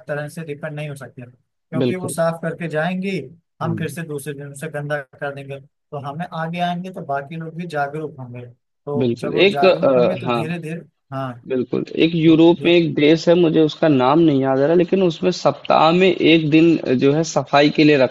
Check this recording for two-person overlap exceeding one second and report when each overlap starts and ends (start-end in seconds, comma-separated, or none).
9.0-10.4